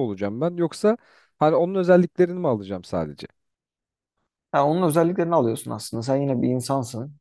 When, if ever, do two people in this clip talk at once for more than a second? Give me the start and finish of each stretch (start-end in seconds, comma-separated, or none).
none